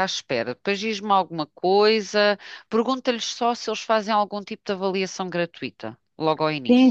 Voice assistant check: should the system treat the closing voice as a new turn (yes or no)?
yes